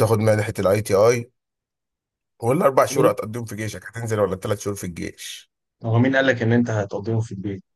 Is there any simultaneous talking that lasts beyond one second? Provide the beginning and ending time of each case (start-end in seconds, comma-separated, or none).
none